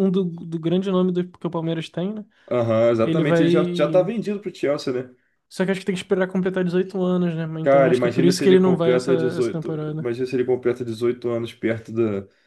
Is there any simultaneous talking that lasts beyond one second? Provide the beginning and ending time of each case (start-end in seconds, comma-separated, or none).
7.6-10.1